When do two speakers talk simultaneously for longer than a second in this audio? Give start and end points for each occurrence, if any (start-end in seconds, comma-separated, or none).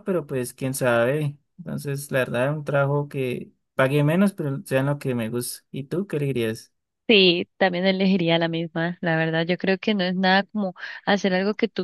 none